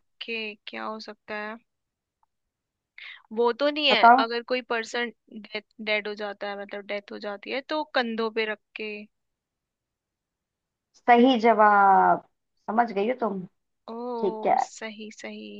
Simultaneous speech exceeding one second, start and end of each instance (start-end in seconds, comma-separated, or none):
none